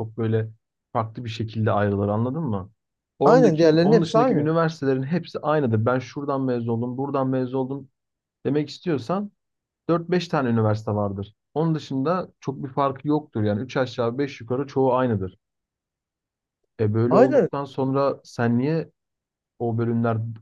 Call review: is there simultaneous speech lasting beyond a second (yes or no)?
yes